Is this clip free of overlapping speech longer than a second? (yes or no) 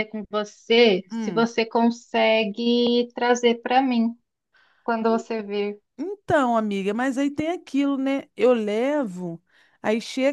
yes